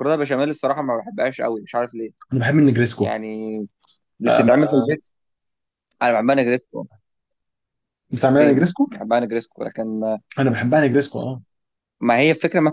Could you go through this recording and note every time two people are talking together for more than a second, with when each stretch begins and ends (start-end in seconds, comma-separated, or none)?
none